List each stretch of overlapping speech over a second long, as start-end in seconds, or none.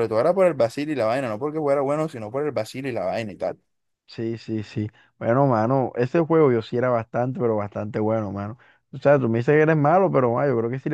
none